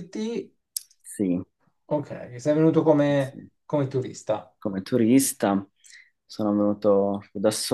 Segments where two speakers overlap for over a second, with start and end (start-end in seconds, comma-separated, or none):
none